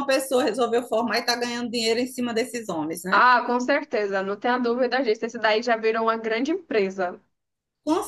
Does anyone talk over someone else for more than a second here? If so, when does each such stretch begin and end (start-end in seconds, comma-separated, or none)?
none